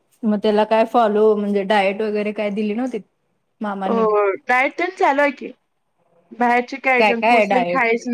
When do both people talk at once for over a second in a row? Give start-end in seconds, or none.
none